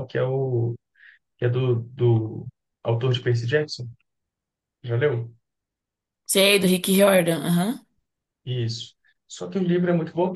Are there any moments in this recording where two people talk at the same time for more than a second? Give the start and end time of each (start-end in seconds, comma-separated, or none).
none